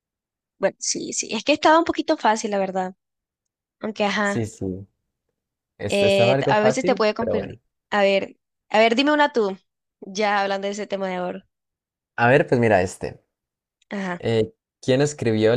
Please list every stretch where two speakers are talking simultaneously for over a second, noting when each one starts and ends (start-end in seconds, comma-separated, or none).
5.9-7.6